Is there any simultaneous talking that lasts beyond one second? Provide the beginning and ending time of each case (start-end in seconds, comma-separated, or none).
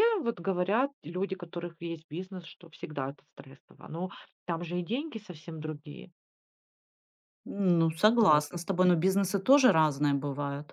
none